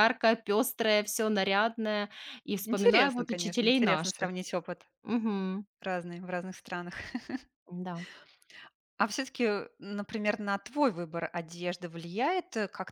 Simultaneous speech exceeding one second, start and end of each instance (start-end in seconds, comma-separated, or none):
2.6-4.3